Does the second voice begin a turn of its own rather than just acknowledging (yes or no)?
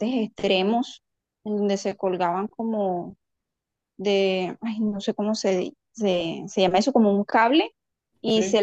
no